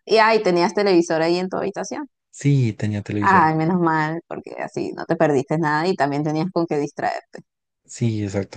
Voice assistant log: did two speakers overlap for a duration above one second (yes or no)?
no